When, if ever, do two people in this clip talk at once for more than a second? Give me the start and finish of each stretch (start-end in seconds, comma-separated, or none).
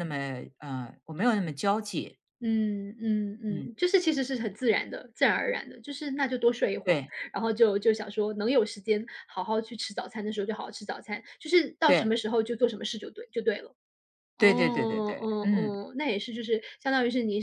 14.4-15.8